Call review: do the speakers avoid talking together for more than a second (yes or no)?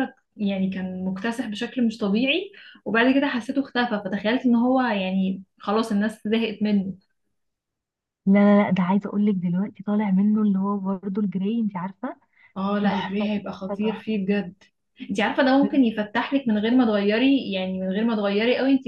no